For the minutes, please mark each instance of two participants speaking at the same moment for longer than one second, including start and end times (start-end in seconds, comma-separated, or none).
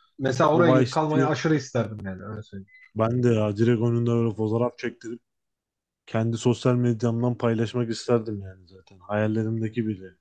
none